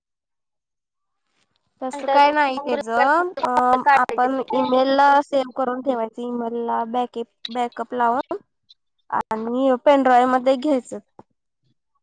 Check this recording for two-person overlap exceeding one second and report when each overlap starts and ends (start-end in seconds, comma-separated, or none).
1.9-3.2